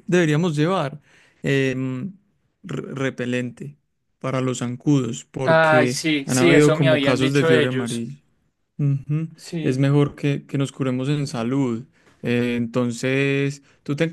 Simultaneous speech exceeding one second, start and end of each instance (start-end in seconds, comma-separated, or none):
5.4-8.1